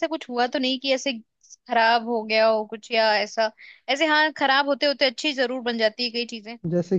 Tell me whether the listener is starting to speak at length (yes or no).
no